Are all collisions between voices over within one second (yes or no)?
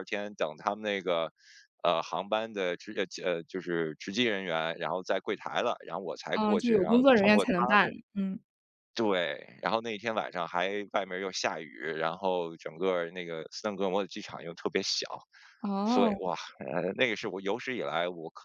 no